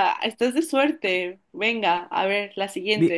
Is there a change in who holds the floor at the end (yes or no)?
yes